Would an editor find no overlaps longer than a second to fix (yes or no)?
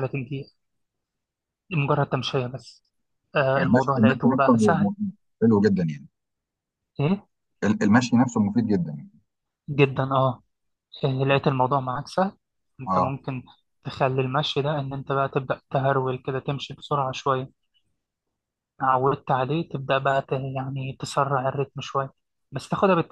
no